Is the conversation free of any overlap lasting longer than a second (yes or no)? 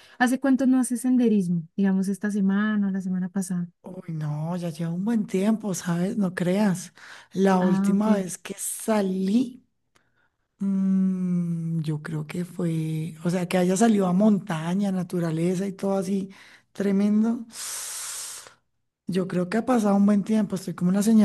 yes